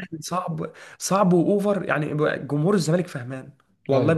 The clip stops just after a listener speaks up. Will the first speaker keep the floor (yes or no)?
yes